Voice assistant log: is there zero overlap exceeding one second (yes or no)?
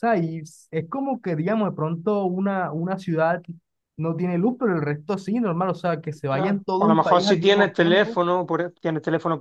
no